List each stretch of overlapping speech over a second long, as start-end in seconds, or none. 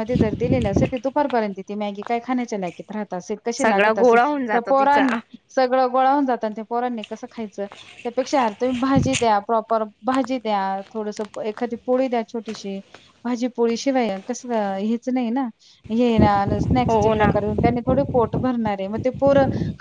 3.6-5.0